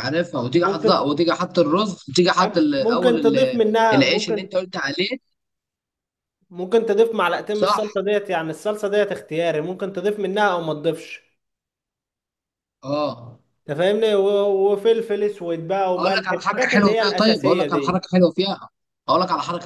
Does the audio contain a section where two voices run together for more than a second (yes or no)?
yes